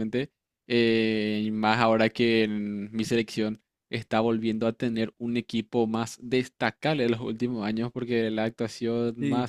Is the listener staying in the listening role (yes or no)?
yes